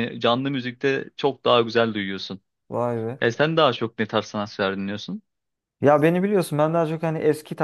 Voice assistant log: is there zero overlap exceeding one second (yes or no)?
yes